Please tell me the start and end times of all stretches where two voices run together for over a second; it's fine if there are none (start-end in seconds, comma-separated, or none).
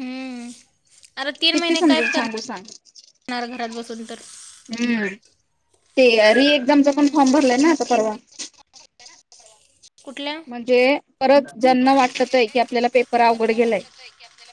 none